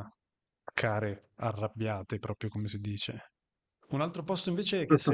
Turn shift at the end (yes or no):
no